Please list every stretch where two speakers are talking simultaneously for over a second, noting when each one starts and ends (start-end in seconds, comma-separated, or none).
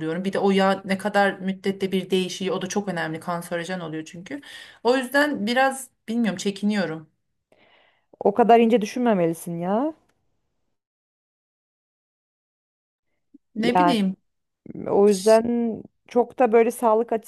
none